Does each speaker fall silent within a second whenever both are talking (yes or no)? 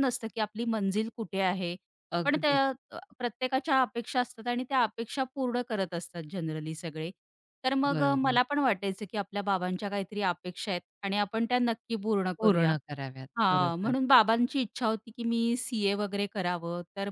yes